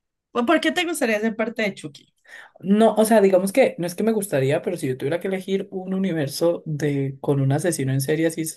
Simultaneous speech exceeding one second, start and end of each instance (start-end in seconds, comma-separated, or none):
none